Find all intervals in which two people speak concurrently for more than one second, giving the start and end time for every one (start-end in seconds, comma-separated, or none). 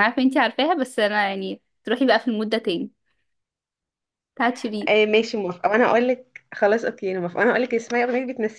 none